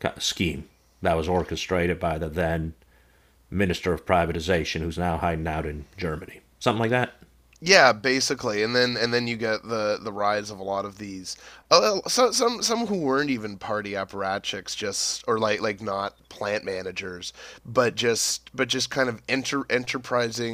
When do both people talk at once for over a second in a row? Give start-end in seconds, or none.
none